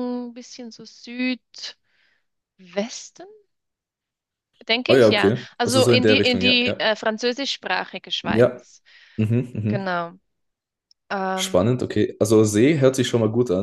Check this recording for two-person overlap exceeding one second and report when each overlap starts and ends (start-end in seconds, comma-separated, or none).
4.9-6.8